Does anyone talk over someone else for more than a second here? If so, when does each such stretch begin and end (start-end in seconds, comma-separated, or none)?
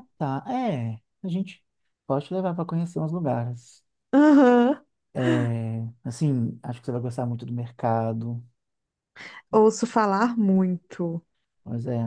none